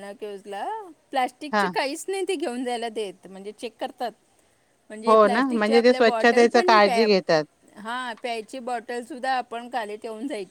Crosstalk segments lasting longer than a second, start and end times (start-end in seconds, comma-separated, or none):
5.1-7.1